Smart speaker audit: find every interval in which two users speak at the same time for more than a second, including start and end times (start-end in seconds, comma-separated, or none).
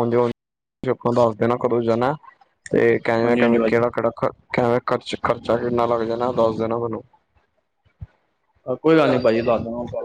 none